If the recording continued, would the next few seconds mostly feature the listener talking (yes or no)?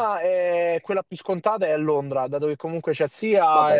no